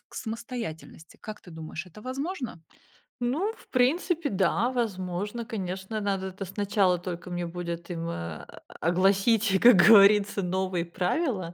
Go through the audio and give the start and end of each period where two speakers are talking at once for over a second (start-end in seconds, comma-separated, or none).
none